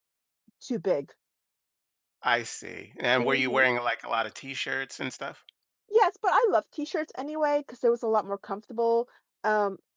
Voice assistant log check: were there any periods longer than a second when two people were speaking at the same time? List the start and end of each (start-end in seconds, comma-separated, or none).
none